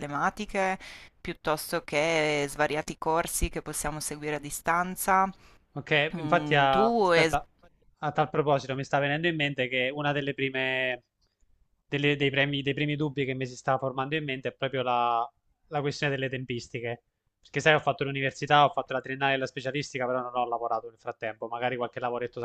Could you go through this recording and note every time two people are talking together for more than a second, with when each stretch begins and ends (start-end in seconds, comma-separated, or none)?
6.2-7.4